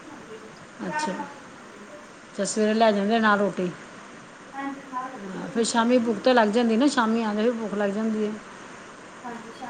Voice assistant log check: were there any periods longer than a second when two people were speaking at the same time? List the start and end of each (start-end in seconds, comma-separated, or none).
none